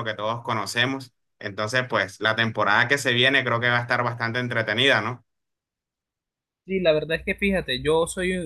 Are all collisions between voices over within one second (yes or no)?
yes